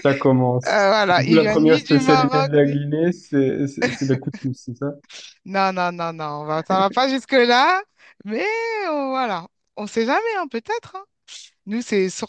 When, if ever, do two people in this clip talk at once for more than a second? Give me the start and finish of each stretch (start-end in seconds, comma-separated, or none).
0.7-2.8